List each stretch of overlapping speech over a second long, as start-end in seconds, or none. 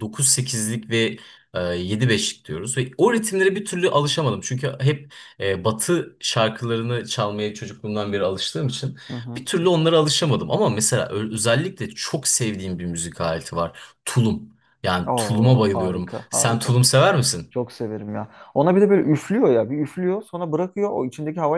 15.1-16.8